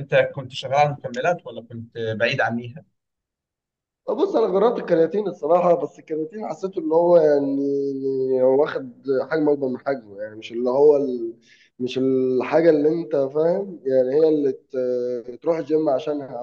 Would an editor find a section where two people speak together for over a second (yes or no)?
no